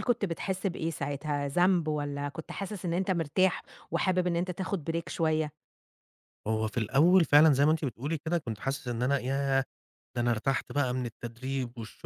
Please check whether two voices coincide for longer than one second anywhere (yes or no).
no